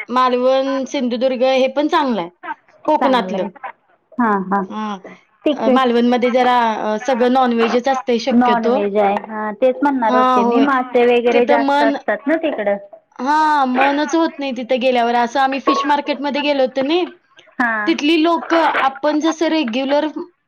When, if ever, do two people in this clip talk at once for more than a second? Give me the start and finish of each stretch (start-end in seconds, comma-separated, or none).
none